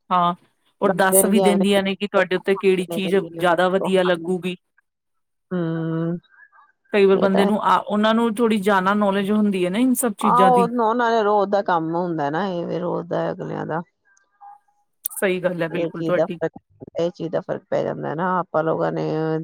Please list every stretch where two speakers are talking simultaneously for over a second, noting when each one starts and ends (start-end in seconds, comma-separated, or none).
2.6-4.3